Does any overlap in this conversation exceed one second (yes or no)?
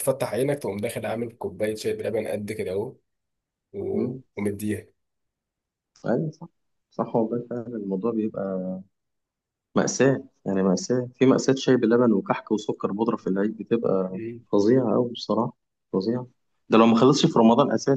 no